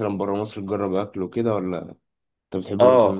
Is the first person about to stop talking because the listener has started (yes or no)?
yes